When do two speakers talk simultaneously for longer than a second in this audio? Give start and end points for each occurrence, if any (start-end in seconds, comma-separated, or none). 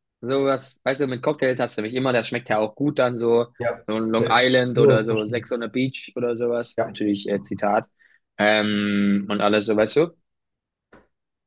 3.9-5.5